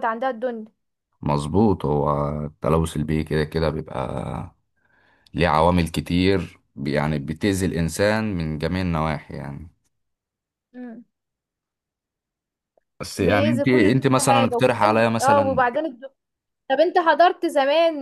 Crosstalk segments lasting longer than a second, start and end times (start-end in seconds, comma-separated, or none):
13.2-15.7